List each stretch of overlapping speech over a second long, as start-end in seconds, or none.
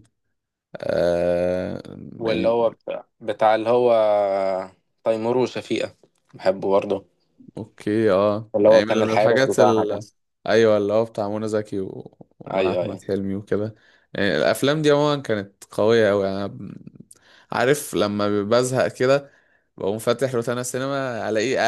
8.6-10.0